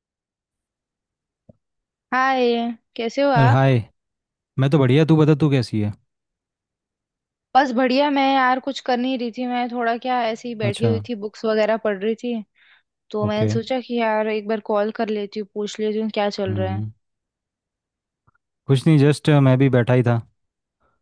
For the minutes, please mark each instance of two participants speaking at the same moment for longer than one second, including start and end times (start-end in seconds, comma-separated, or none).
none